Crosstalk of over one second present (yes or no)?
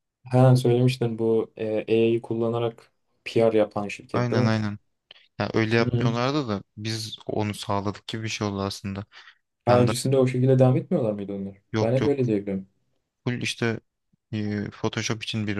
no